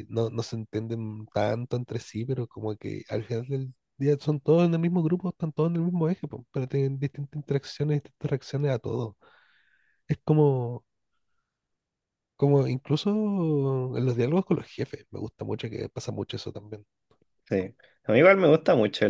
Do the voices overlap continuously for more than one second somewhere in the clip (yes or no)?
no